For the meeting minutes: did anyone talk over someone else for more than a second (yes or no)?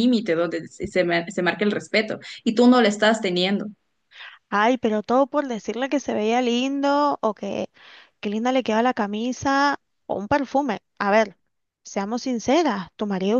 no